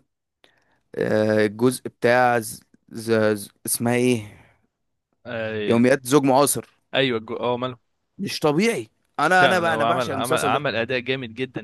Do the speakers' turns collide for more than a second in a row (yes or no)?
yes